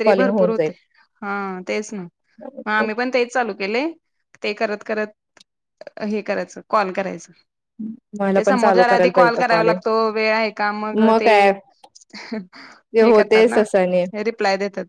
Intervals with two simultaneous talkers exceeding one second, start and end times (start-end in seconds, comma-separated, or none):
8.4-9.8